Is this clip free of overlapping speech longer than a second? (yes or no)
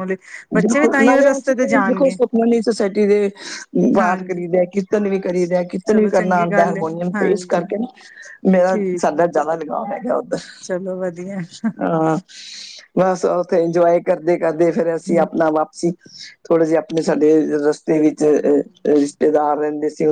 no